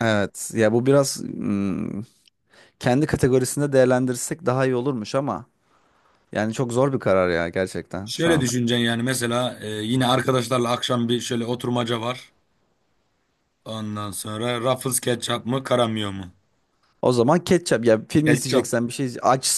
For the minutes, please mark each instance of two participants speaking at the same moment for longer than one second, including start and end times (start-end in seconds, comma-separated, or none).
none